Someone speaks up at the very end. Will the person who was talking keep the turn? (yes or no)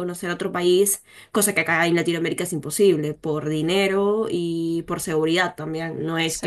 yes